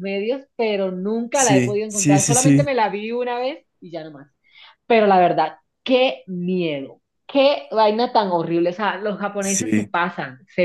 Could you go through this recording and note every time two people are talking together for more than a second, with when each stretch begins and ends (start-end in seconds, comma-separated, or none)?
1.3-2.7